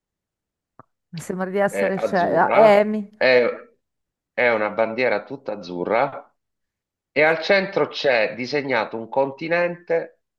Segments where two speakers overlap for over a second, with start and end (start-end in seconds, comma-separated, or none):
1.7-3.1